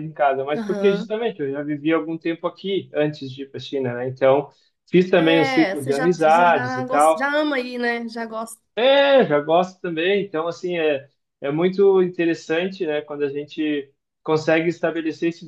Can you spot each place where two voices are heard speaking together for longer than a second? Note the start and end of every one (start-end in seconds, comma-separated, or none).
5.2-7.3